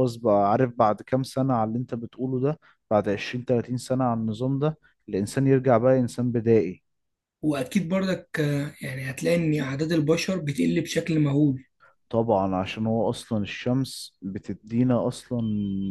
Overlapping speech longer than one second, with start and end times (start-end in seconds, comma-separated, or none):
none